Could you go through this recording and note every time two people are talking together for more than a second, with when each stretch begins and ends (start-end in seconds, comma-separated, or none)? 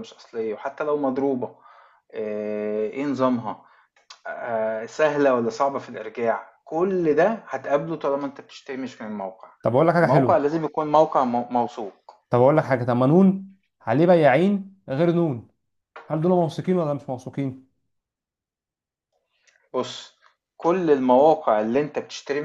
none